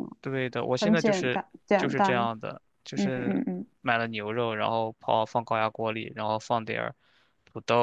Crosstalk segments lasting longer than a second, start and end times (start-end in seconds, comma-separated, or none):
0.8-2.3